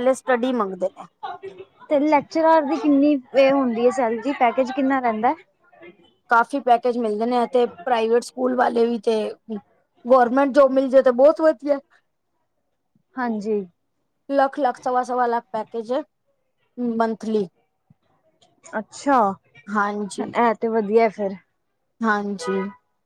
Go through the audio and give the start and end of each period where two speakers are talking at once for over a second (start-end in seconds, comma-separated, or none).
none